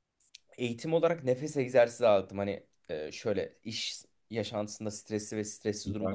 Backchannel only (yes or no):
yes